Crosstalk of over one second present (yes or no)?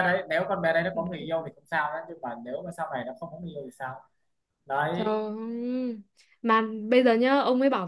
no